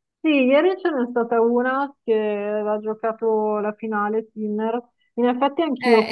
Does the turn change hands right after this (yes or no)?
no